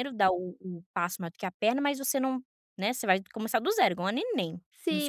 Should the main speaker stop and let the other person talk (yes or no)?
yes